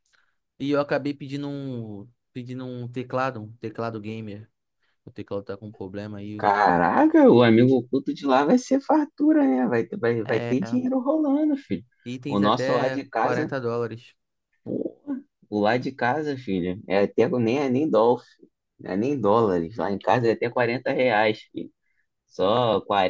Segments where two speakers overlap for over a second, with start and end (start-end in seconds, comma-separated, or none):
12.3-13.5